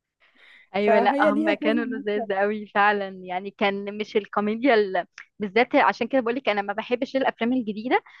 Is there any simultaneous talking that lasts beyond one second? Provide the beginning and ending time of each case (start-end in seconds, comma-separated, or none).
0.8-2.3